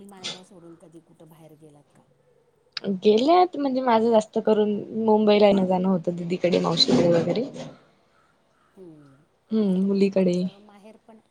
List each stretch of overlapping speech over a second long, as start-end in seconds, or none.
none